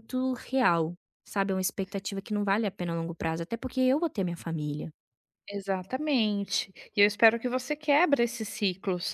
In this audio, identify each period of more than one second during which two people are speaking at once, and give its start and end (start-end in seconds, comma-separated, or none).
none